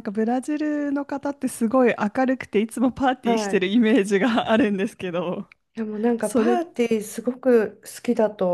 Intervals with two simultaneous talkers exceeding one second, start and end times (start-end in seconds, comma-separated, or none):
none